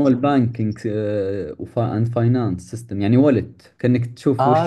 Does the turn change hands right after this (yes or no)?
yes